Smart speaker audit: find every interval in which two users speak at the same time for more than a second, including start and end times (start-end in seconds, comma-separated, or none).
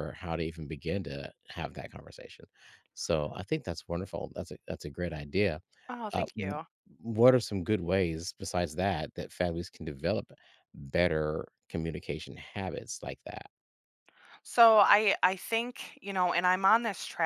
none